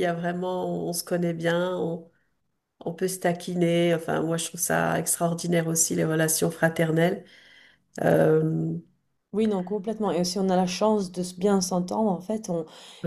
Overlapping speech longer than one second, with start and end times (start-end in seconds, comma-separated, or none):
none